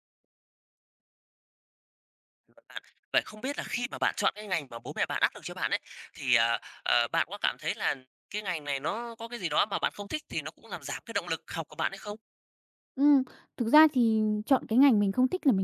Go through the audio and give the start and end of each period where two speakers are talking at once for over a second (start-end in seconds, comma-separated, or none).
none